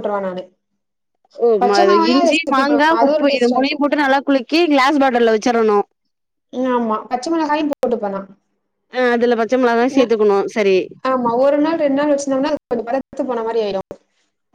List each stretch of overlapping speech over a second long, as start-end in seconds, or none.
1.6-3.9